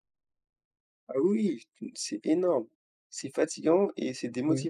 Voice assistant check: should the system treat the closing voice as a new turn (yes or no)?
yes